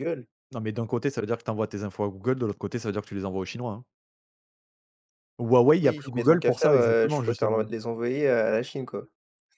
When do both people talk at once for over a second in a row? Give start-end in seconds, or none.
5.8-7.6